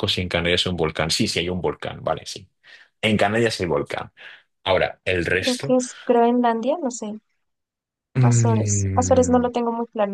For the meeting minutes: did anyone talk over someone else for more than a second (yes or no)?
yes